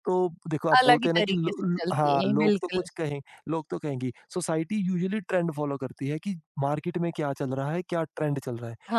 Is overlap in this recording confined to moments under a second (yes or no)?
no